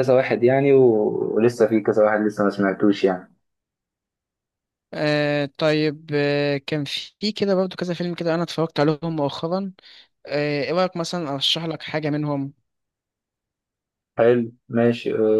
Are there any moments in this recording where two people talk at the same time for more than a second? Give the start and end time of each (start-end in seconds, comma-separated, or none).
none